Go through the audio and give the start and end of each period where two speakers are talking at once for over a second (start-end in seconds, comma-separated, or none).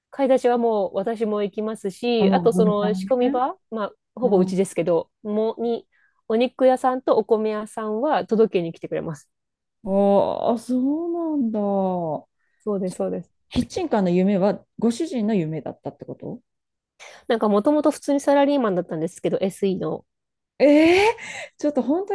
2.2-3.4